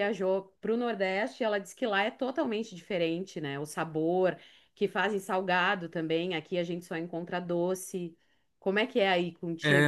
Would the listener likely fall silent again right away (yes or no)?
no